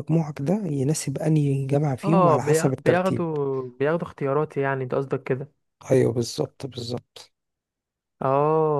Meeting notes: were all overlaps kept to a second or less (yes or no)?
no